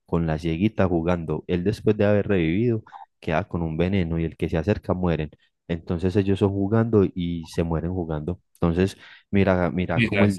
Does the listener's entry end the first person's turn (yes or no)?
no